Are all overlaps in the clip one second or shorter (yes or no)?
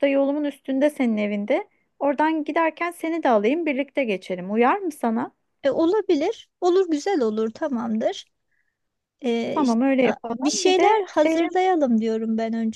no